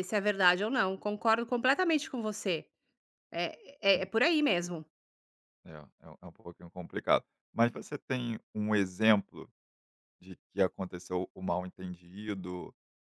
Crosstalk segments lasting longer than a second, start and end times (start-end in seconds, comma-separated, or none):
none